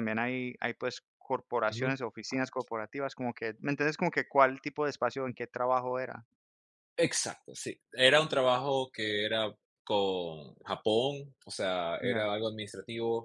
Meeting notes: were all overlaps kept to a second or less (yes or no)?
yes